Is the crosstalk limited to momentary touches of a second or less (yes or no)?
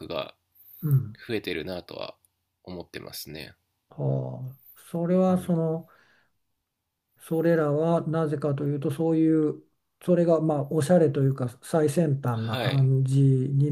yes